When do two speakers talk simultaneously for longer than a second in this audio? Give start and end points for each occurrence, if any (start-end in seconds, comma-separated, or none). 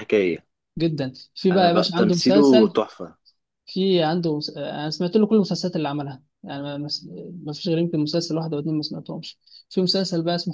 1.5-2.8